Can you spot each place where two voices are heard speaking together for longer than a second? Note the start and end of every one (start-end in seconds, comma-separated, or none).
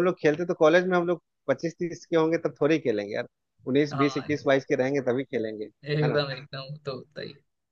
none